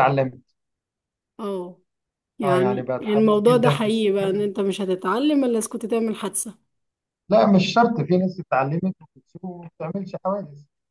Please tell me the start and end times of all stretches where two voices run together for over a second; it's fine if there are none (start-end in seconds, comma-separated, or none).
2.4-4.1